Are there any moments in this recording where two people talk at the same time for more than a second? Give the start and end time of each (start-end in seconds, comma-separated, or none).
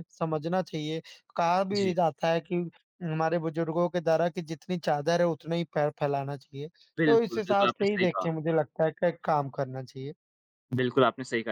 7.1-8.3